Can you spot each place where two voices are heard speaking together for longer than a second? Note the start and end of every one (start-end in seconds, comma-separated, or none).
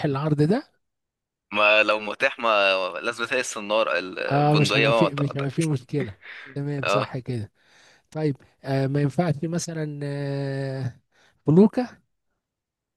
4.3-5.5